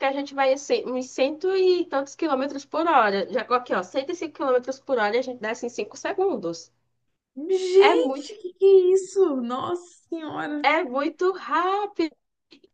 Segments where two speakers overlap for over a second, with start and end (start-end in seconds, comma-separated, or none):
none